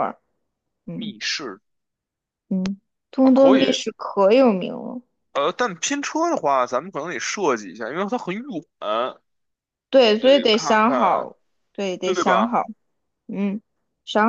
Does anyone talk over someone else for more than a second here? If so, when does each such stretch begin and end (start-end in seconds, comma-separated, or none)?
10.0-11.3